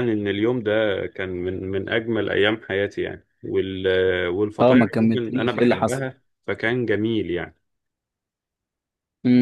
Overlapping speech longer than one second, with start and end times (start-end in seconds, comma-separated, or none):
4.6-6.0